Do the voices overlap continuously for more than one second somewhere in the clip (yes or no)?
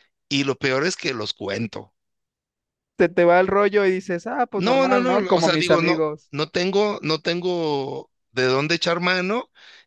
yes